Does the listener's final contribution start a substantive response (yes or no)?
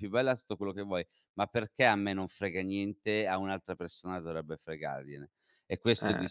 no